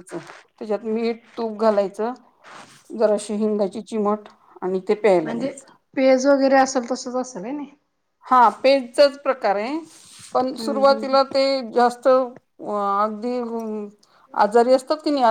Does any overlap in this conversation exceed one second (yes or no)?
no